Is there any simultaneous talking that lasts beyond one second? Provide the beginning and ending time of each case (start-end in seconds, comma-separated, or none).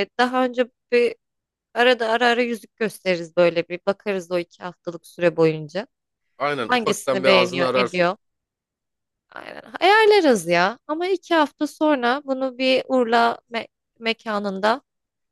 6.7-8.1